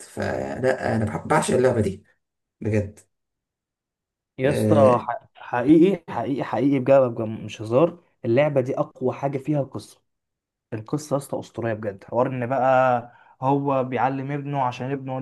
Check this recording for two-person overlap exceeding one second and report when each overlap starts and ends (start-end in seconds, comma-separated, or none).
none